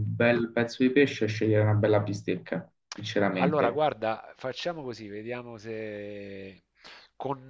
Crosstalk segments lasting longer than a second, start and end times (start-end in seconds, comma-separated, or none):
none